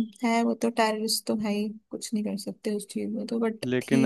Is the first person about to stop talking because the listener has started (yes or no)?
yes